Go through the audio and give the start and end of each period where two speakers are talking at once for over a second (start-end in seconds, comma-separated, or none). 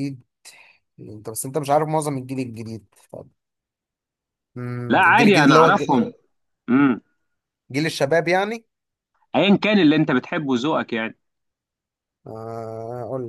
4.9-6.1